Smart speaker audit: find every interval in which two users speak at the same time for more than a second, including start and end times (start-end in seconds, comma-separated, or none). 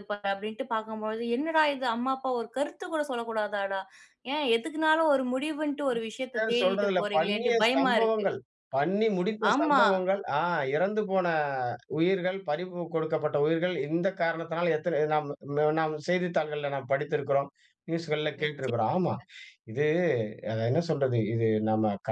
6.3-8.3